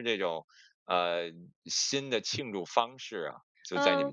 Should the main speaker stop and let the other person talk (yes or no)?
yes